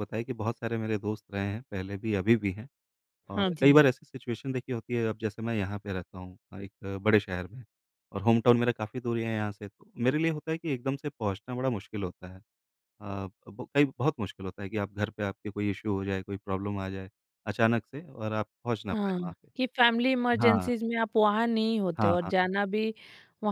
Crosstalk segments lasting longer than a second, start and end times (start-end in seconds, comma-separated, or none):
none